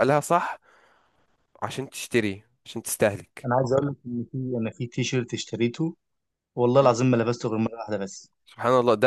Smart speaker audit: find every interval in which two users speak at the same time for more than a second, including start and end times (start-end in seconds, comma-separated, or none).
none